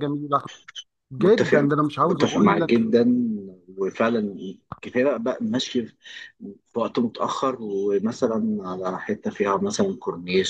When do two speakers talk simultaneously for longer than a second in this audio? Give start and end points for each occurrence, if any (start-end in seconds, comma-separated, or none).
1.2-2.8